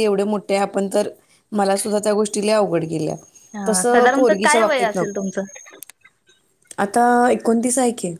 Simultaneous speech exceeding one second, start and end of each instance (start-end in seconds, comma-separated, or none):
3.7-5.3